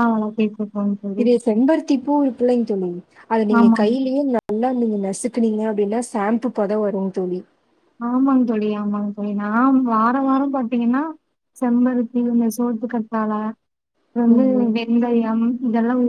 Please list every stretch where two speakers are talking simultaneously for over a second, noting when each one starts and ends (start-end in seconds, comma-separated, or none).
none